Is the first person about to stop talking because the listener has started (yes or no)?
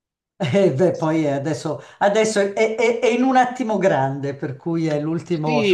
yes